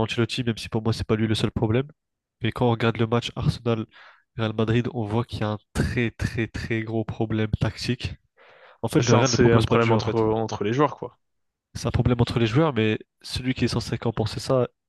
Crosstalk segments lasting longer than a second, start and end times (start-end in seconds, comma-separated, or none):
9.0-10.2